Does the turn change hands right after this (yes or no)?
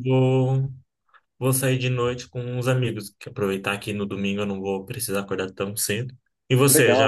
yes